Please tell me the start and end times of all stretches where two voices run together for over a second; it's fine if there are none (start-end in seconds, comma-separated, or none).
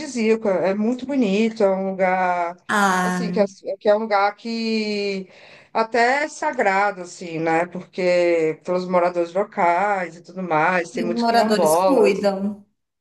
11.0-12.3